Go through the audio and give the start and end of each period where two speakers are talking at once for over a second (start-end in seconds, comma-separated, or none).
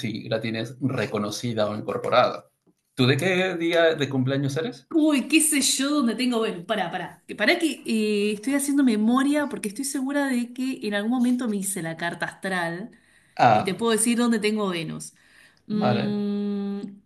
none